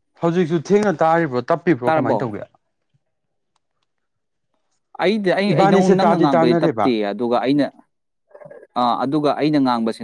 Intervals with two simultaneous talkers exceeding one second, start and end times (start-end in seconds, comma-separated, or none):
5.5-6.9